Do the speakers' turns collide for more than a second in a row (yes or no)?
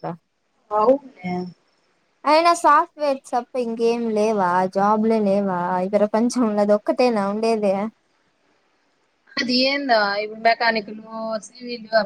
no